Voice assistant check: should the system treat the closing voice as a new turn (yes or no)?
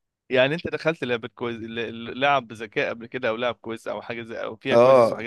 yes